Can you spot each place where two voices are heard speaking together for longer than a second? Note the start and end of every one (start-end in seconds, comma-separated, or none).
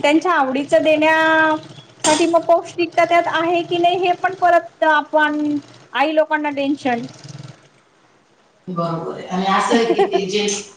none